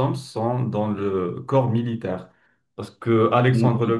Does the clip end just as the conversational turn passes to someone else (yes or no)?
no